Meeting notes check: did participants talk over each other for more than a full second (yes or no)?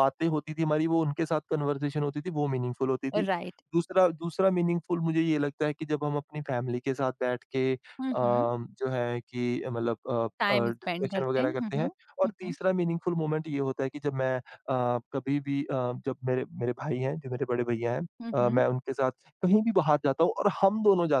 yes